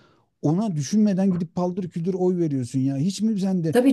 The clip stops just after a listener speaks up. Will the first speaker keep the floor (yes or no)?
no